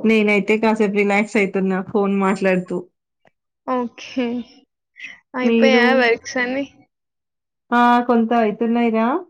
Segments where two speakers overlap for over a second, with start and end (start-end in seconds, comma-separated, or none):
none